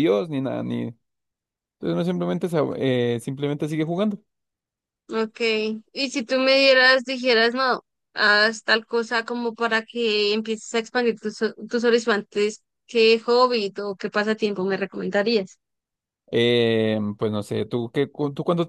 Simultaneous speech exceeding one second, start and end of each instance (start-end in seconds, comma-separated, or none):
none